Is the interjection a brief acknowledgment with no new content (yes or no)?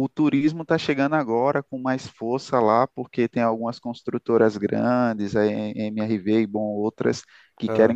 yes